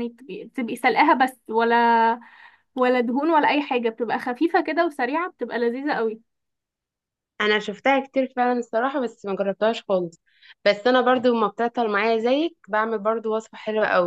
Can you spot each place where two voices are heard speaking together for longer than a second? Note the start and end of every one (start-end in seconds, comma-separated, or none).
none